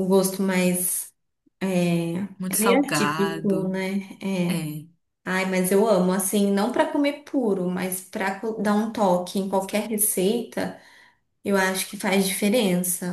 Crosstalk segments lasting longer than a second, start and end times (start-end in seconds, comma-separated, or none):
2.4-3.8